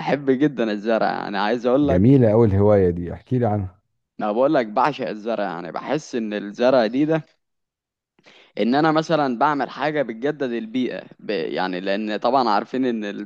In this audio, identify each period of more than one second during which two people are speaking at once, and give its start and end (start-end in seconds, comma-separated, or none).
none